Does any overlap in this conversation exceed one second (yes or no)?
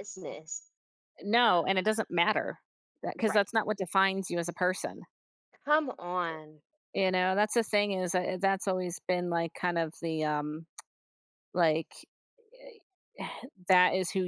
no